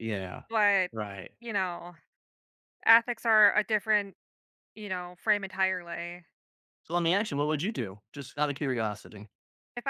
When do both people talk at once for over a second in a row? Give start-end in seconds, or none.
none